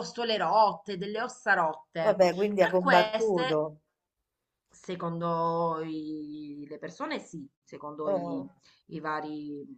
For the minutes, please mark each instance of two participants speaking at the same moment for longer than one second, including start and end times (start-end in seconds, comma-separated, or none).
2.0-3.6